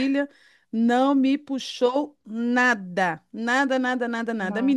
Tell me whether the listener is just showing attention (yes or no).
yes